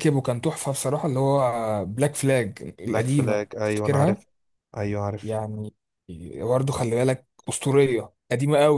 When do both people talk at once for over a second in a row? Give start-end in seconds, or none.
2.9-4.2